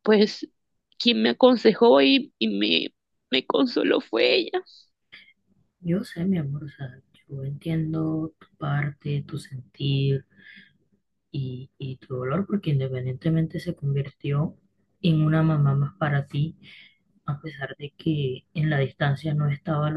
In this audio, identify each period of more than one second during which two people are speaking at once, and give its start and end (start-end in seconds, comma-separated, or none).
none